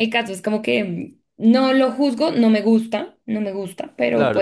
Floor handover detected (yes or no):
yes